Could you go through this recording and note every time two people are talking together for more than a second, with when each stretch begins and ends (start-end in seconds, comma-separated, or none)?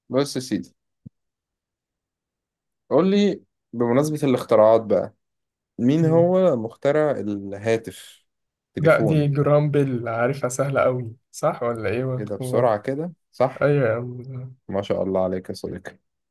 none